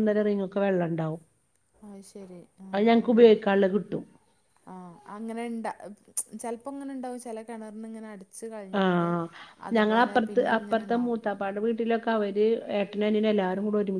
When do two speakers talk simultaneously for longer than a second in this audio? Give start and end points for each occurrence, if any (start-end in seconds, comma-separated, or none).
none